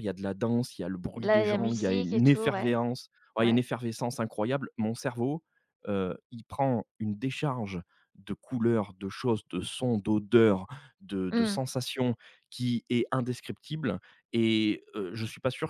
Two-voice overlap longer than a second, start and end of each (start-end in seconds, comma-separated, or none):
1.1-2.8